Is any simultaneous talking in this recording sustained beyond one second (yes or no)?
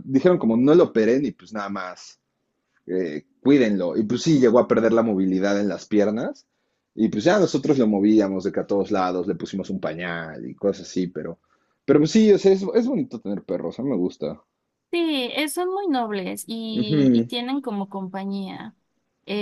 no